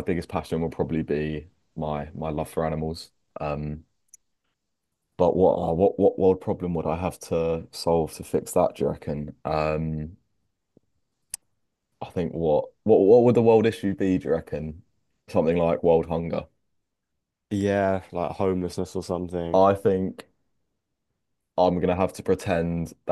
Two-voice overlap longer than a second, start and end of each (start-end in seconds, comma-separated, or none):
none